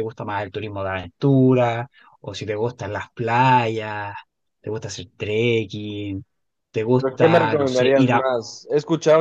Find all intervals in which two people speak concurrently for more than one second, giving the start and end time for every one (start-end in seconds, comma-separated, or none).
7.0-8.2